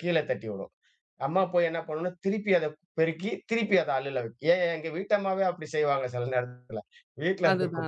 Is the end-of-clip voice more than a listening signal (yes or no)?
no